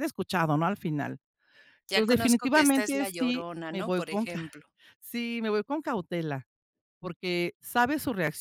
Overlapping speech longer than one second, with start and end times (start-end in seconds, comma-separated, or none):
1.9-4.5